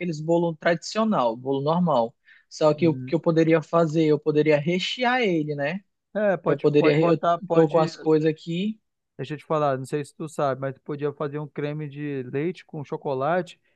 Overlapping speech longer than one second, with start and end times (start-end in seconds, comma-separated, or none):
6.5-7.9